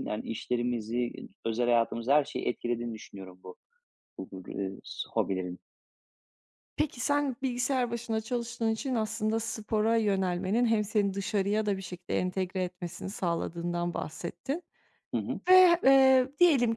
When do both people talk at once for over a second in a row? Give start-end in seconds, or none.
none